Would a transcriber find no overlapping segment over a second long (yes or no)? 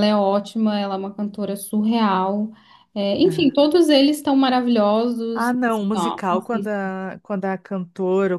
no